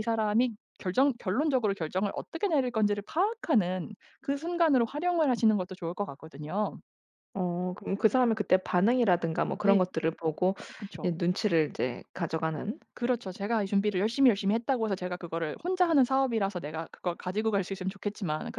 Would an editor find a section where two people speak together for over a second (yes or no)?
no